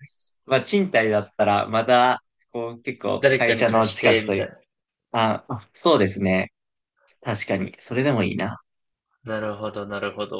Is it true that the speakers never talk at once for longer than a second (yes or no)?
no